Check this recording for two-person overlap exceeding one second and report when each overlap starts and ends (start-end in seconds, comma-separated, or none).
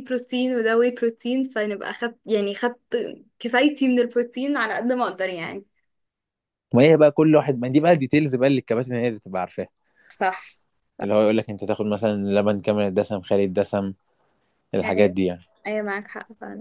none